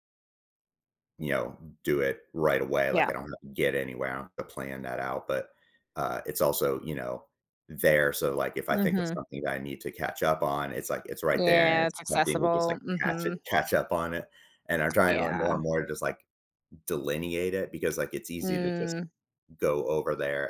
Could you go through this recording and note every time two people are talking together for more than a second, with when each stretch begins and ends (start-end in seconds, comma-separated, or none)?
11.3-13.4